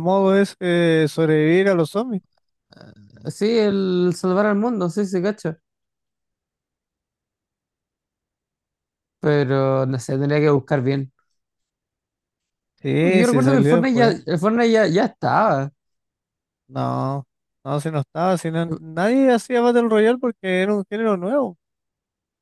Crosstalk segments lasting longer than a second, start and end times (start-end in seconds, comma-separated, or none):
13.0-14.2